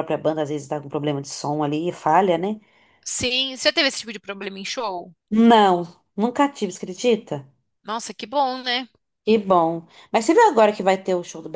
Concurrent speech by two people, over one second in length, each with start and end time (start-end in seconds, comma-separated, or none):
none